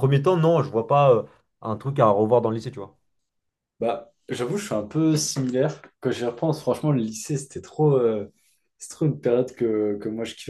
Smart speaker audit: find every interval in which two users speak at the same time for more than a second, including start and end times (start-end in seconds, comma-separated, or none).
none